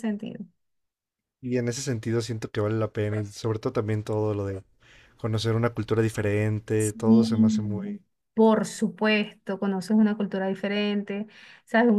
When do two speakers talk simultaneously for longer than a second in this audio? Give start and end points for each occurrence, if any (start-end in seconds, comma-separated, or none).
6.8-8.0